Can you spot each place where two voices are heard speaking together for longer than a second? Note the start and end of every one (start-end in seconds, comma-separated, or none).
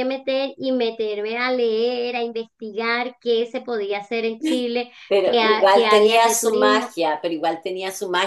5.1-7.0